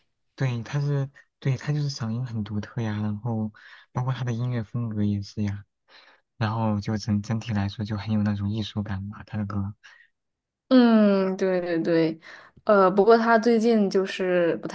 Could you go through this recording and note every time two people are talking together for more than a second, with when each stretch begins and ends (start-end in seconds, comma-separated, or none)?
none